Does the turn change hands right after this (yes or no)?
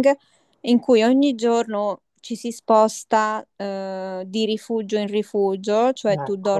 no